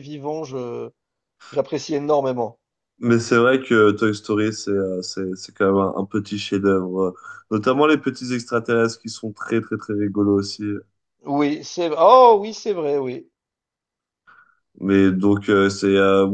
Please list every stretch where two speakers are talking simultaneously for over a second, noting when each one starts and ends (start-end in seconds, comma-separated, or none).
none